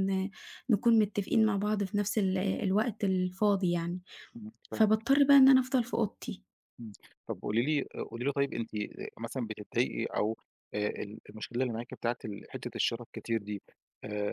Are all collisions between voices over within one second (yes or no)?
yes